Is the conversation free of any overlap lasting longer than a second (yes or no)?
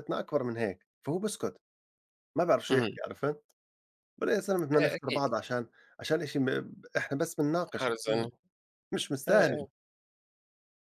yes